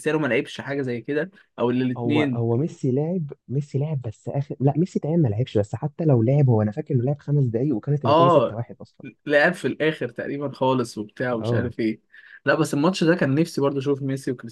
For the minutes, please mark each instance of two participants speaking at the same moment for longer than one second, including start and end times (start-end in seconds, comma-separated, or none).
none